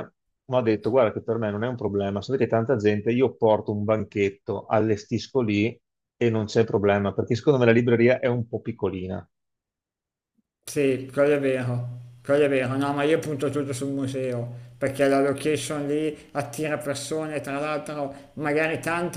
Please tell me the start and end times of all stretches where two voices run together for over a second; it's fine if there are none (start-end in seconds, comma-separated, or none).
none